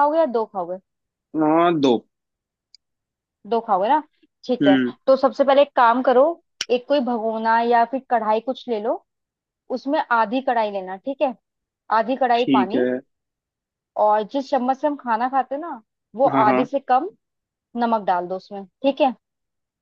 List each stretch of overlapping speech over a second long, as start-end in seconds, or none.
none